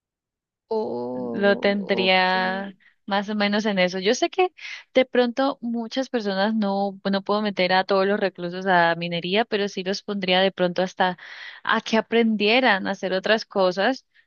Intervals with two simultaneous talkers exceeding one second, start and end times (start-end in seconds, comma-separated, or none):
1.1-2.3